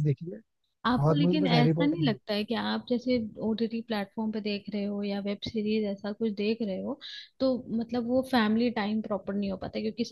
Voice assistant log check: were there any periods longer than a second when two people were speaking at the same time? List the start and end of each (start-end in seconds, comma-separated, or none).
1.0-2.2